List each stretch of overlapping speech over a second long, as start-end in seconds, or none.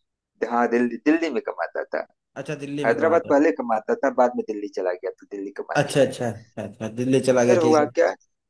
none